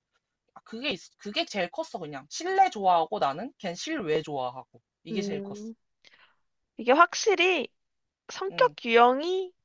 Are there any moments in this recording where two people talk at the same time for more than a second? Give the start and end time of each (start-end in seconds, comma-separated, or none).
none